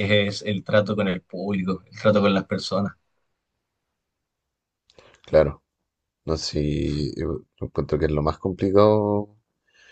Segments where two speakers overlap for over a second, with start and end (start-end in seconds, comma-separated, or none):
none